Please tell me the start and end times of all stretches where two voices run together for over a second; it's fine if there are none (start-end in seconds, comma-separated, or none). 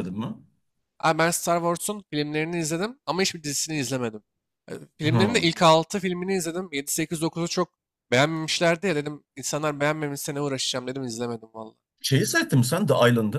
none